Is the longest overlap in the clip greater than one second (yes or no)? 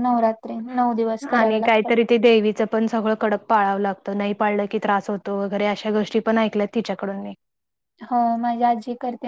no